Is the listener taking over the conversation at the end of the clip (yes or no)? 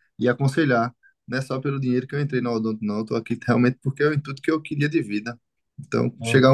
no